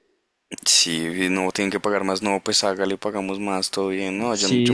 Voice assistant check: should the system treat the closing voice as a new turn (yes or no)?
yes